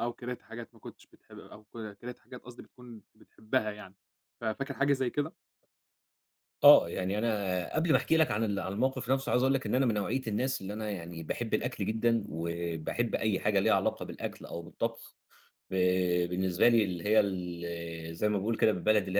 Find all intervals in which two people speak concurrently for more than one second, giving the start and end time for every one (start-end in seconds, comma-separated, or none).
none